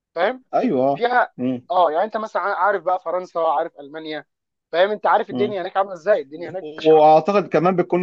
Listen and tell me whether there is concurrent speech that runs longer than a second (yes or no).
no